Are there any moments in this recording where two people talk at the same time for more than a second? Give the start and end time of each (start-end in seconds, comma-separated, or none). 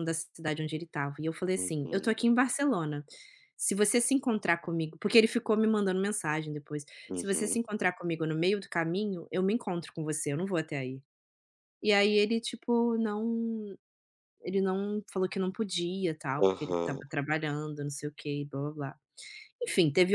none